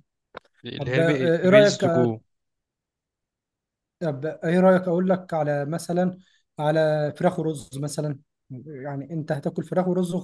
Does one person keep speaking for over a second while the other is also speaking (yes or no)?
yes